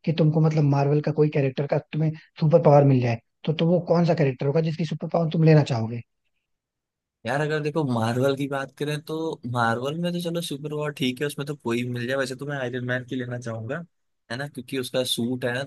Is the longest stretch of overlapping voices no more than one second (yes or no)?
yes